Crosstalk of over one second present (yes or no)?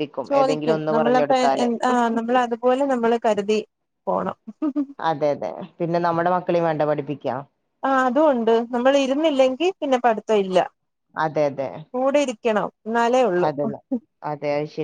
no